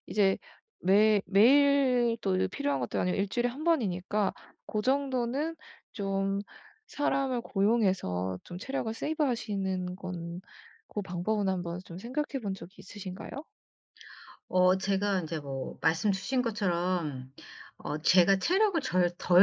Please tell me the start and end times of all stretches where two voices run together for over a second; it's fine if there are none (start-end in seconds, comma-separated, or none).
none